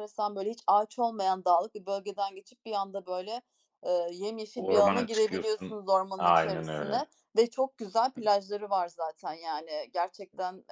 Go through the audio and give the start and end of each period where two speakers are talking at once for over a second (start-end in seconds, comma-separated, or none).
4.5-7.1